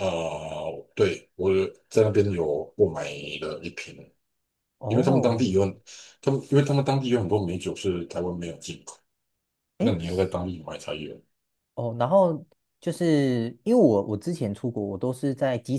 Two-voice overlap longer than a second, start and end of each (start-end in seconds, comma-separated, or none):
none